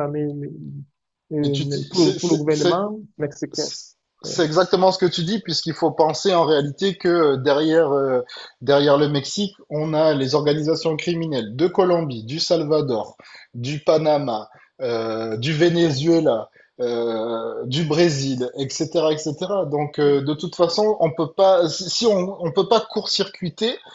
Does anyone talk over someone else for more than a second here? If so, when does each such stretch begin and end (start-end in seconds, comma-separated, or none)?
1.4-2.8